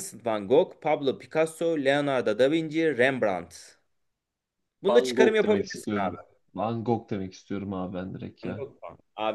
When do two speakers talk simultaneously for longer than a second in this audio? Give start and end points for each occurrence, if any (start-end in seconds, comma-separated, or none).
4.9-6.2